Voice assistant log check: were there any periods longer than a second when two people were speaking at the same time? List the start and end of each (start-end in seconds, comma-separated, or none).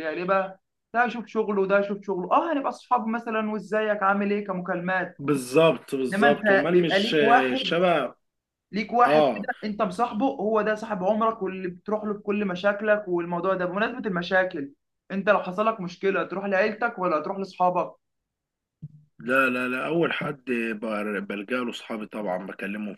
6.1-7.8